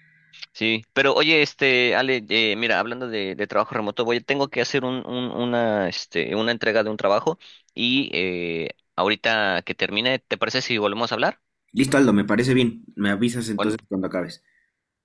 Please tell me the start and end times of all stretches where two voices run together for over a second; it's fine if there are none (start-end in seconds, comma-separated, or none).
none